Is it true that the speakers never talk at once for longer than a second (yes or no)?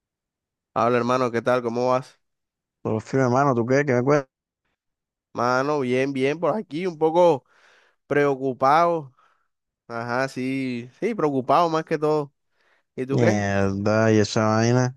yes